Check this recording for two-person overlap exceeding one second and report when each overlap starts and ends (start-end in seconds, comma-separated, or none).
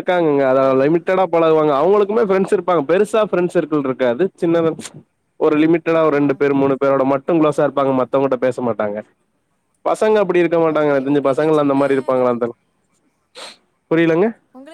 10.8-12.3